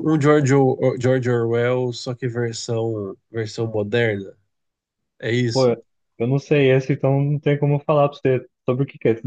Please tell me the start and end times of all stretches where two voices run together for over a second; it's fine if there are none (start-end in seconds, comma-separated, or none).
none